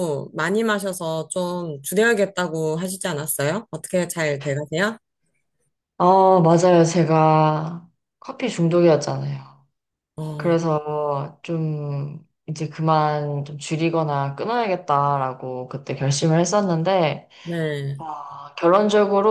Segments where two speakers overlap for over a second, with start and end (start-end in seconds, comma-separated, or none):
none